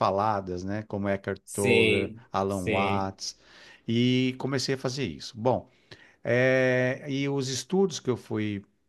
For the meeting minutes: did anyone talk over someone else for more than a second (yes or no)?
yes